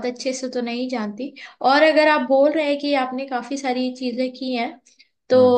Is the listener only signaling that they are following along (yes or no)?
yes